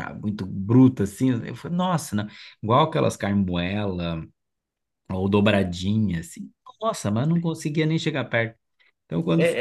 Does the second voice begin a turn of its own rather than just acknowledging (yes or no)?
yes